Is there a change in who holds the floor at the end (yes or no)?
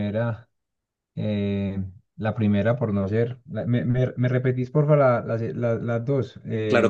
yes